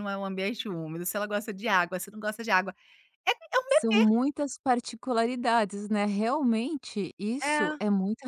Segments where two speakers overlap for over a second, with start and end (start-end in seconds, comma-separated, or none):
none